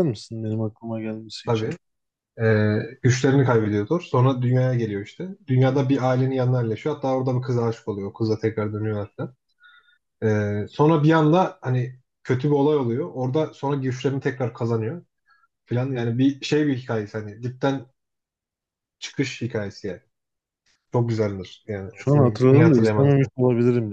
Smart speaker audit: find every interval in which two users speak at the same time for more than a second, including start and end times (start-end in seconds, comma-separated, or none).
21.9-23.3